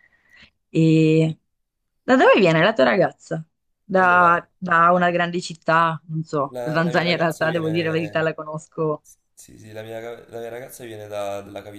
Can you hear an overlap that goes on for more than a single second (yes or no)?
yes